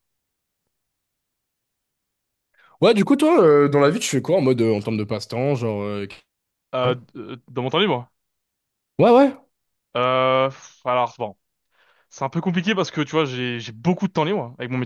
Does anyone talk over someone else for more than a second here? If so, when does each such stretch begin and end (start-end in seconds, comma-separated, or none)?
none